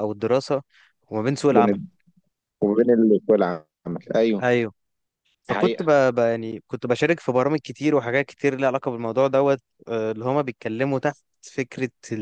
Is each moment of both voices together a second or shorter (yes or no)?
yes